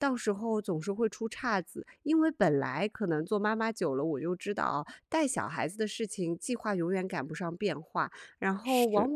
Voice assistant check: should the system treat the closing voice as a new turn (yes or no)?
no